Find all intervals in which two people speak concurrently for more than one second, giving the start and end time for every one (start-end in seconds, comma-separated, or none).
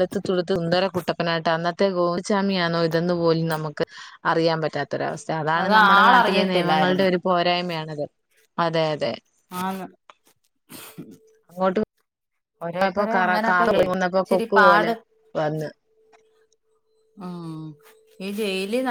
5.6-7.0, 12.7-14.9